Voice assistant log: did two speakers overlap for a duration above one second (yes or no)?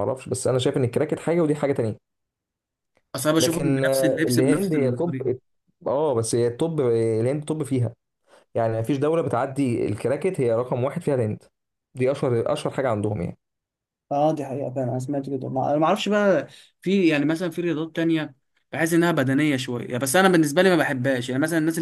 yes